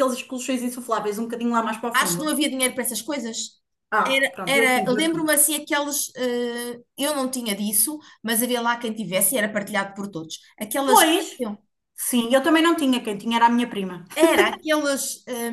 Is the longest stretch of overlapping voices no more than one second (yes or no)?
no